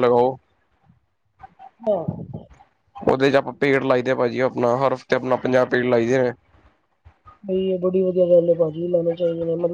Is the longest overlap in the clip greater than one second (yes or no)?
no